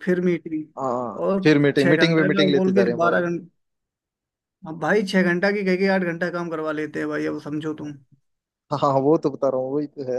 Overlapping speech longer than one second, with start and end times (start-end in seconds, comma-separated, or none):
1.3-3.2